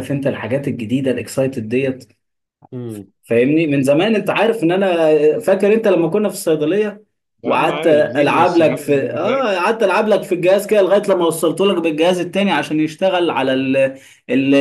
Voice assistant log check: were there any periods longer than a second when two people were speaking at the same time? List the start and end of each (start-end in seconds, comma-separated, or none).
7.4-9.6